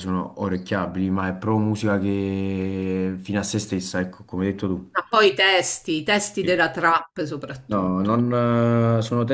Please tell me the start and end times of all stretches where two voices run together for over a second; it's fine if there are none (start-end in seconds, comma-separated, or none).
none